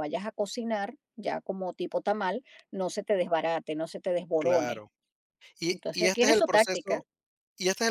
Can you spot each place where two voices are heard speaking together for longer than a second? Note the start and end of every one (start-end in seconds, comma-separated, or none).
5.7-7.0